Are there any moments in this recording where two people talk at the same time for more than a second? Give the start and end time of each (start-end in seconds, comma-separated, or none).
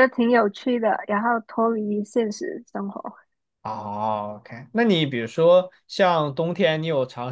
none